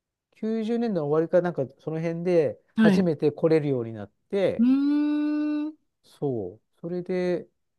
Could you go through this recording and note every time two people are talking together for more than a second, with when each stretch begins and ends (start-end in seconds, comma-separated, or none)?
none